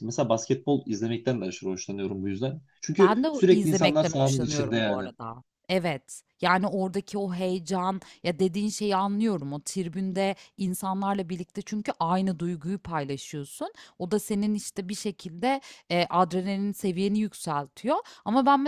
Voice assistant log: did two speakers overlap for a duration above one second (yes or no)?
yes